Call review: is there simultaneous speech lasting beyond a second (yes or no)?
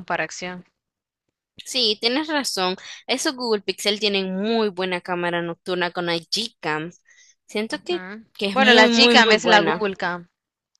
yes